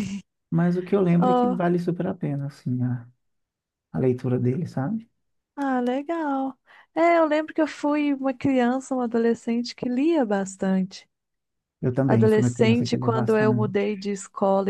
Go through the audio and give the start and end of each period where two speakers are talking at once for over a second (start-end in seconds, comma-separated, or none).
12.1-13.8